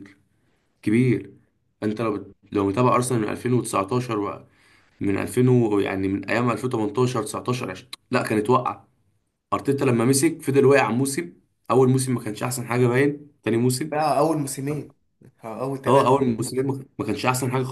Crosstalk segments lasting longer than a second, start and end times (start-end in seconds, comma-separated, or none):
none